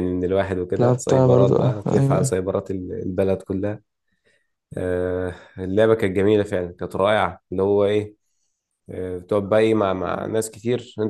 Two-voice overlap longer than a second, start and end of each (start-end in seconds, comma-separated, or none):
0.8-2.4